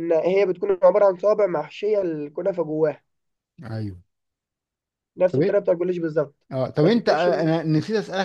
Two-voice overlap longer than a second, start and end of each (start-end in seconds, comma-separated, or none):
none